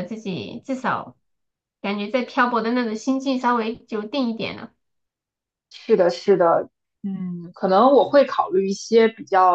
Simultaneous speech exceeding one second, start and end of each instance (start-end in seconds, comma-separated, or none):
none